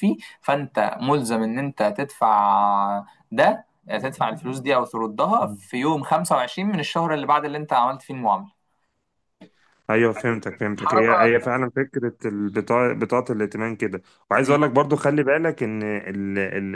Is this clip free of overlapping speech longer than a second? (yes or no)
yes